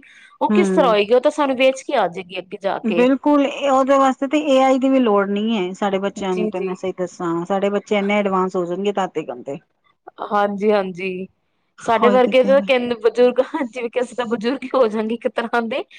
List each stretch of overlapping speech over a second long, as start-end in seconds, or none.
none